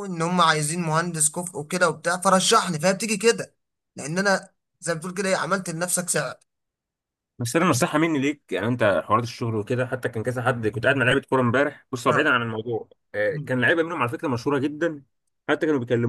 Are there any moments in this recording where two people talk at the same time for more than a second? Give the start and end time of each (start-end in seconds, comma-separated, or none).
none